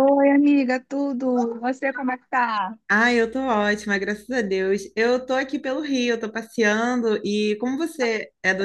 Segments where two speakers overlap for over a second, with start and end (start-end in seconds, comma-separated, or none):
none